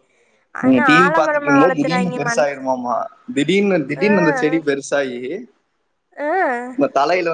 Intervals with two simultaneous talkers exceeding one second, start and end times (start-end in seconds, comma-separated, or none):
0.6-2.4